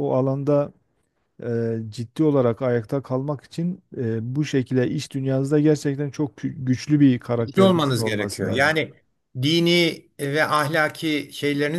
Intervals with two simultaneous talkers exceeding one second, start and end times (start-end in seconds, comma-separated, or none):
7.3-8.7